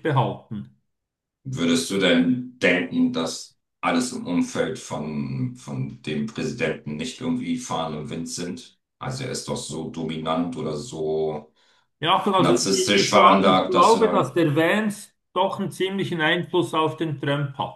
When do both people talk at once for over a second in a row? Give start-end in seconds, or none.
12.4-14.3